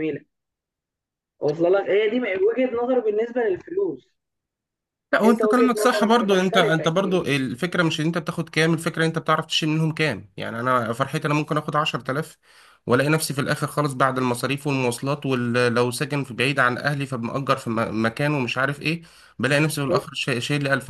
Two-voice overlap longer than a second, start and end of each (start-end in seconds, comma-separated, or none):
5.2-7.2